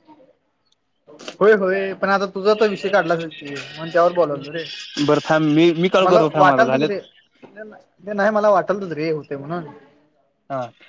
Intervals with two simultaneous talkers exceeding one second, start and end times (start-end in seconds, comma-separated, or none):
none